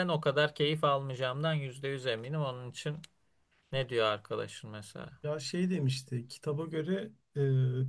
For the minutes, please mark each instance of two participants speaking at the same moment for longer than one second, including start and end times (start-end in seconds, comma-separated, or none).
none